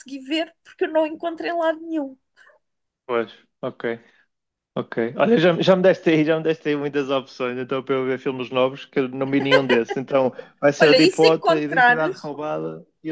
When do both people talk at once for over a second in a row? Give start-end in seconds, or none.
10.8-12.3